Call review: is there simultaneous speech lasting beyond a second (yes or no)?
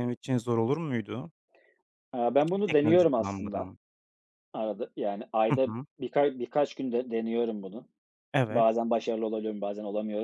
yes